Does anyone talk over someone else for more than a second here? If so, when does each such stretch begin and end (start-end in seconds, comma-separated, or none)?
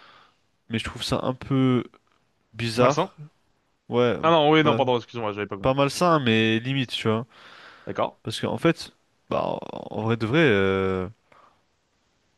none